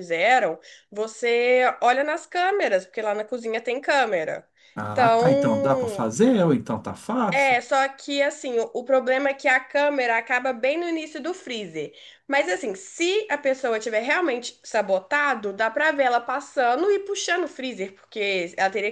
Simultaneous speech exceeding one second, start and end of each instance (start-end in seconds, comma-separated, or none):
4.9-6.1